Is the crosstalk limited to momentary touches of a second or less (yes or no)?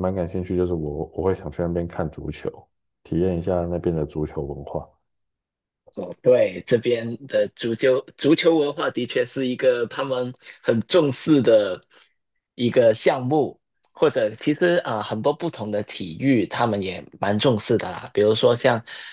yes